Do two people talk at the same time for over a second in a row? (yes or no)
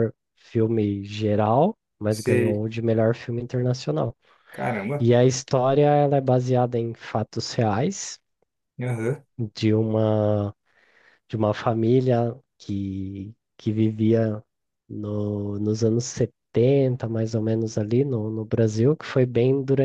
no